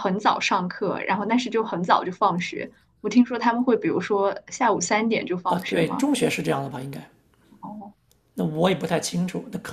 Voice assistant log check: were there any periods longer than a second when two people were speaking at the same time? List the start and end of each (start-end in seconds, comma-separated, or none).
none